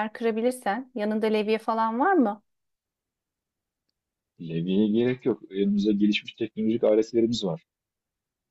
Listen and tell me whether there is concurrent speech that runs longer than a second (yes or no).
no